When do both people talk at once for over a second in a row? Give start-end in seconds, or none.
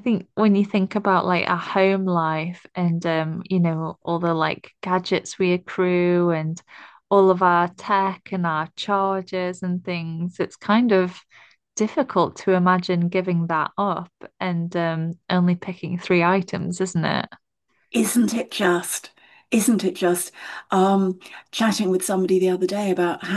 none